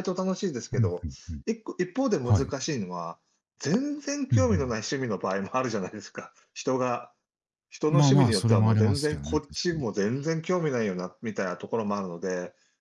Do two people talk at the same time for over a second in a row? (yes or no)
yes